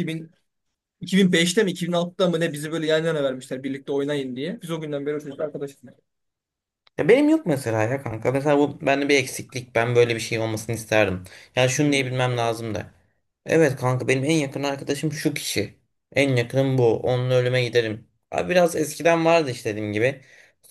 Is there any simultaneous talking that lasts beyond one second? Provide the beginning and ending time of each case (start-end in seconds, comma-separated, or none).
none